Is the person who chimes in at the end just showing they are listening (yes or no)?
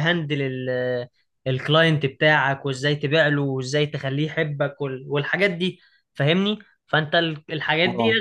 yes